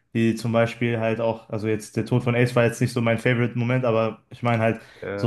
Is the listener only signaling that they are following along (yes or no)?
yes